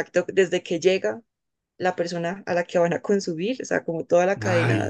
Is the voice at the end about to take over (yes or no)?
no